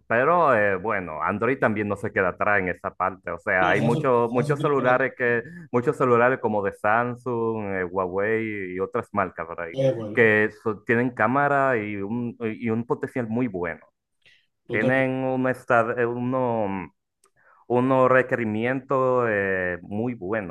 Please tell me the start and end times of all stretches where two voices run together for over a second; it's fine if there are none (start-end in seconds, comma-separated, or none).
3.6-5.5